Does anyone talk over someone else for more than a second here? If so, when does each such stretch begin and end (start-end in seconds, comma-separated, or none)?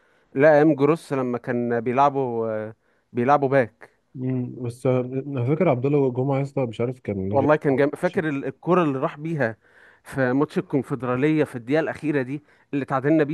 none